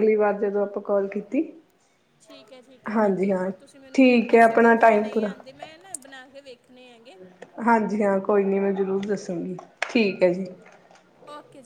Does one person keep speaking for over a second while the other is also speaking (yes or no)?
yes